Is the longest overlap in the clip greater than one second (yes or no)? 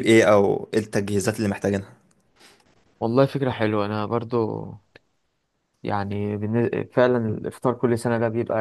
no